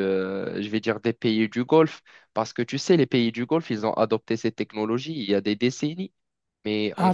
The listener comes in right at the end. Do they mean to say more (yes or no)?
no